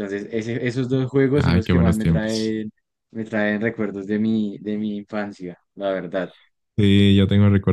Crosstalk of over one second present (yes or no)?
yes